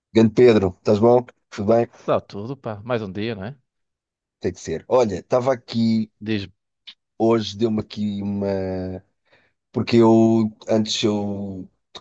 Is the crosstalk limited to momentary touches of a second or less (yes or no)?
yes